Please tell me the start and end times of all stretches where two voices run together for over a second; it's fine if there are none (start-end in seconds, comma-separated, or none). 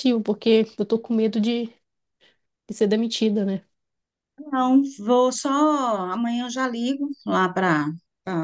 none